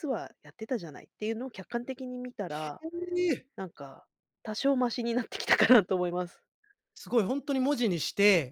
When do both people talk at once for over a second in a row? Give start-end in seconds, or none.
none